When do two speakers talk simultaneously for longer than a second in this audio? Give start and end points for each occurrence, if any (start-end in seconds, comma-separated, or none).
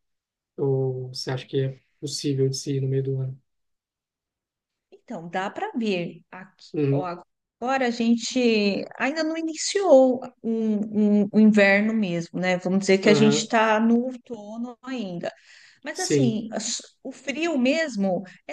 none